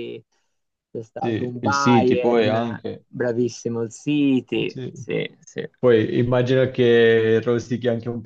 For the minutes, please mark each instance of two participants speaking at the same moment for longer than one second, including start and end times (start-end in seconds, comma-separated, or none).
1.1-3.0